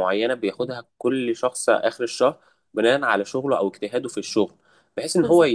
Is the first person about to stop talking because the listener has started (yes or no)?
no